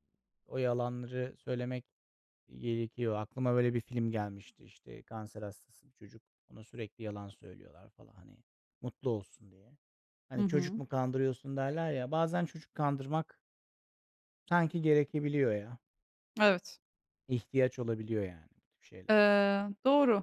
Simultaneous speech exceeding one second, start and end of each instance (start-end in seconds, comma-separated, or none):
none